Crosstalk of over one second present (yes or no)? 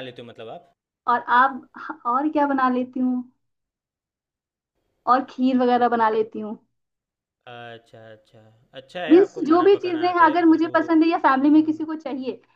yes